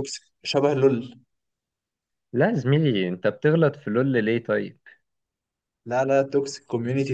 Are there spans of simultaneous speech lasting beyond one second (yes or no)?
no